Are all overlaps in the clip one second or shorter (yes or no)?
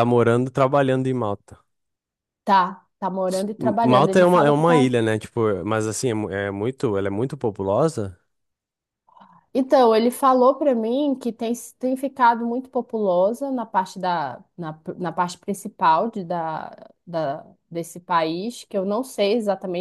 no